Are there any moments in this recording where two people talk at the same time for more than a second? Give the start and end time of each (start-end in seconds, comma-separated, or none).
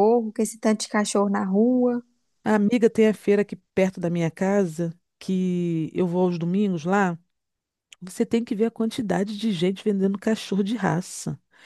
none